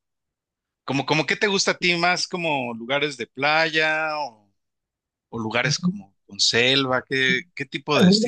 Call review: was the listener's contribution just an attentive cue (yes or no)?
no